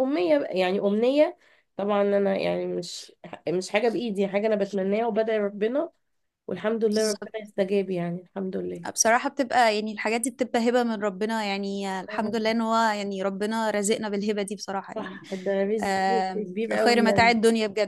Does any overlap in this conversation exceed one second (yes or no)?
yes